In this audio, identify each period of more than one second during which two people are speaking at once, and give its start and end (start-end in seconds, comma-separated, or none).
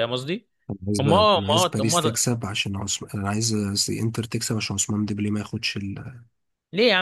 1.0-2.2